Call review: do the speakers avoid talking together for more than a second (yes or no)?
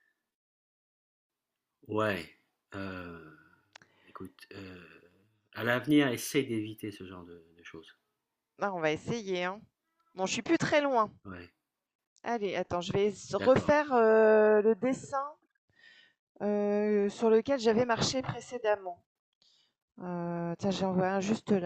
yes